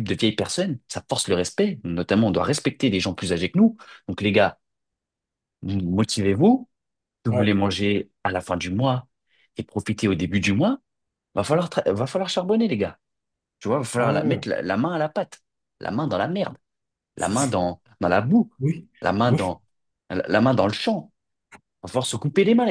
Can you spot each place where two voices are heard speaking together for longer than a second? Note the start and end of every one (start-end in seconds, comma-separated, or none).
none